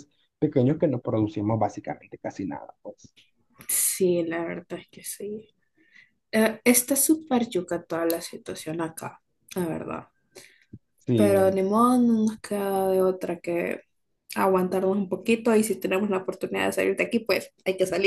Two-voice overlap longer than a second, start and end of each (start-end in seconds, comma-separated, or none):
none